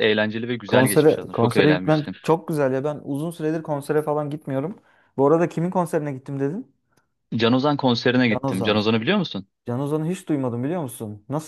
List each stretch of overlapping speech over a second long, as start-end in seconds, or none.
0.7-2.1